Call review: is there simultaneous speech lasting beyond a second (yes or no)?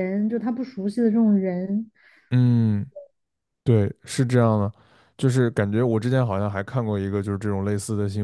no